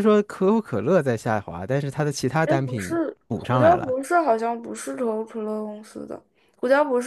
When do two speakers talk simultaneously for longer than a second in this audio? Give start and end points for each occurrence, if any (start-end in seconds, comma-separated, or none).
2.4-4.0